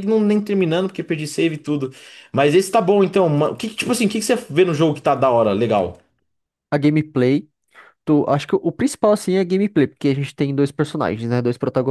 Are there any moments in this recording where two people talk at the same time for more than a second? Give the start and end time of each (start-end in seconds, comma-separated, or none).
none